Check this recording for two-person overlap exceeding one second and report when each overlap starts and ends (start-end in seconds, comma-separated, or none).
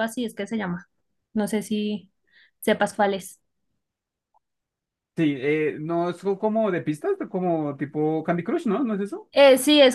none